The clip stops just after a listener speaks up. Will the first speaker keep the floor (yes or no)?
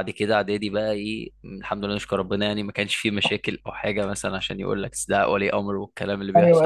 no